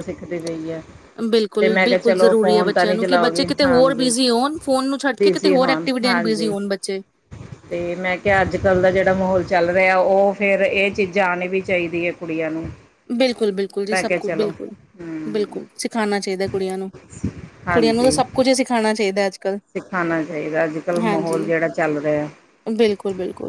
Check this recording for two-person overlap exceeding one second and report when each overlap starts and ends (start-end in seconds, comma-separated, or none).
1.6-4.1, 5.2-6.5